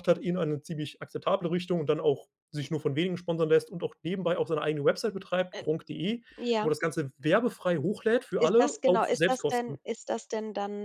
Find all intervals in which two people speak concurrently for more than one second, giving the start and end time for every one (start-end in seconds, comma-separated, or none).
8.4-9.8